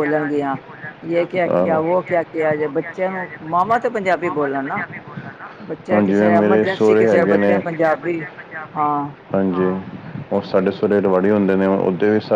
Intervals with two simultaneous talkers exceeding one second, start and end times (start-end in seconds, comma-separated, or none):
5.9-7.5